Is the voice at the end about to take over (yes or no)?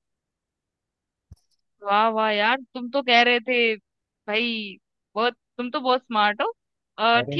no